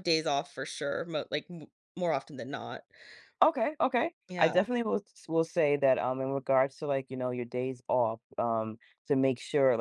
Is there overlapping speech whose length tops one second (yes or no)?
no